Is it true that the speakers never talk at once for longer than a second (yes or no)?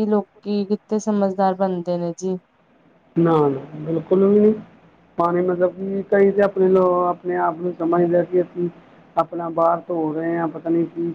yes